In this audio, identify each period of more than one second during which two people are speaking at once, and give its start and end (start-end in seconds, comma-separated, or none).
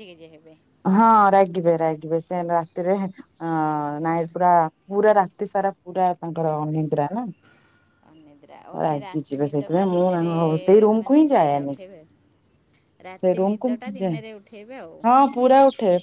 8.9-10.3